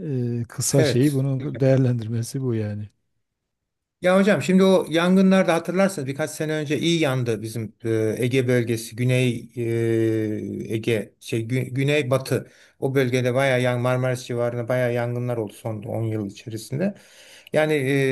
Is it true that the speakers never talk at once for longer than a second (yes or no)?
yes